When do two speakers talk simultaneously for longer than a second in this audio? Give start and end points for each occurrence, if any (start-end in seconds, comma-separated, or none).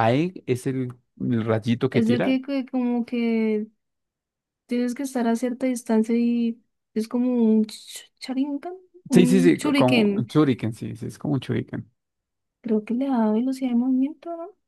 9.1-10.3